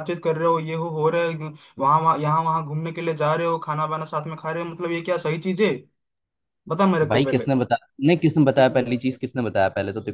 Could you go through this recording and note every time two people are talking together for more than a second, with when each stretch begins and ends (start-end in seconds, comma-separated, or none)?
none